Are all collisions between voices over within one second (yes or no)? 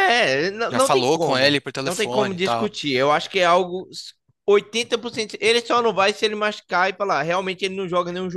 no